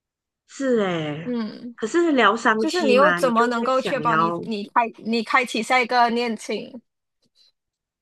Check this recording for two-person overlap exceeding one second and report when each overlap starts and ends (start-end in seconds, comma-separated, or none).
2.6-4.4